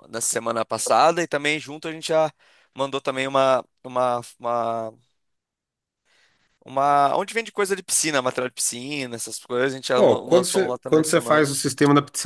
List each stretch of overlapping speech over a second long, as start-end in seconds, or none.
9.9-11.5